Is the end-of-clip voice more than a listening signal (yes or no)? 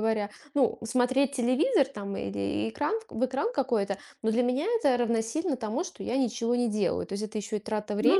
no